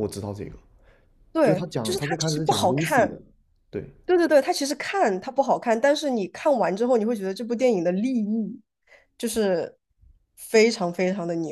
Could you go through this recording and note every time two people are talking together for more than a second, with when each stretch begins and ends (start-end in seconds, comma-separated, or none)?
1.4-3.1